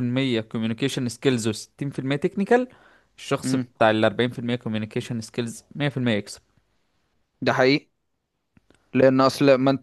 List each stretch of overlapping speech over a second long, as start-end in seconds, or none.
none